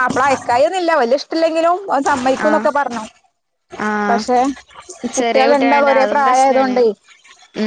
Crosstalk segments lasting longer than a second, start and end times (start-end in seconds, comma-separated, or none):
5.2-6.8